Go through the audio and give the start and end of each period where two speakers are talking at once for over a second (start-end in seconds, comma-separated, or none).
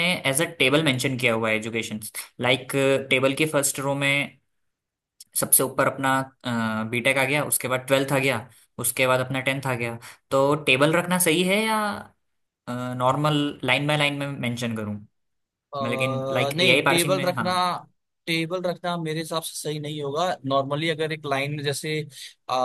15.8-17.5